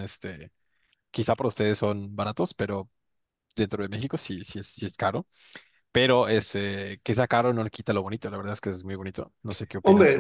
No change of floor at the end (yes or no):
no